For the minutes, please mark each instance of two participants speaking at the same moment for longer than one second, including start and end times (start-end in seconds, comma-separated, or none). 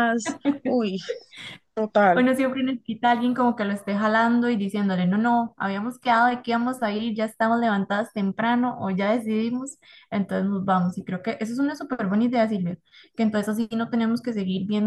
none